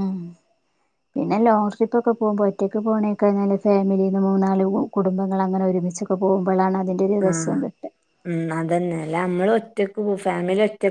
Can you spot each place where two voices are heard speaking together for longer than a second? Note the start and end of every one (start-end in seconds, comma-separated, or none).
none